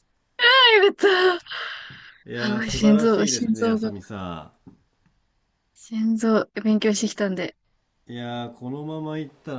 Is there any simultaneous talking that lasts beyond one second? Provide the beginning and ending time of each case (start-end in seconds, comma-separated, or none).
2.4-3.9